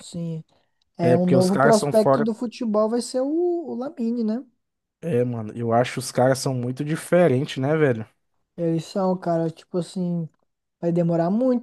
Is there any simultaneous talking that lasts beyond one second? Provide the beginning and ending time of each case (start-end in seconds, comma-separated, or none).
1.0-2.3